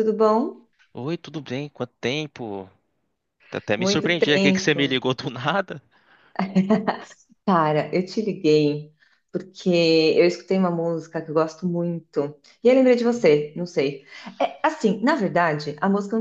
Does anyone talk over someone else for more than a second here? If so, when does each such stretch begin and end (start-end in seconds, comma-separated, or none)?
3.8-5.0